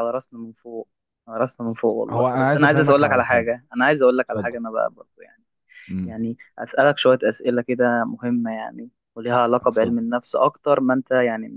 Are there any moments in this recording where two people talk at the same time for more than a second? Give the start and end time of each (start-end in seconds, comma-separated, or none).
2.1-3.5